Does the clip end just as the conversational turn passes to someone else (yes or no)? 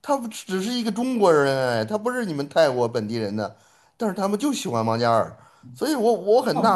yes